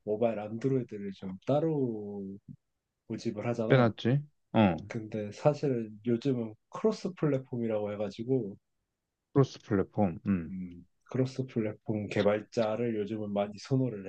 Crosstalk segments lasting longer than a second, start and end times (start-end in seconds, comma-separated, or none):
none